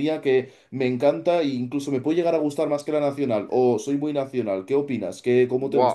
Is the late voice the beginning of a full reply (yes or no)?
yes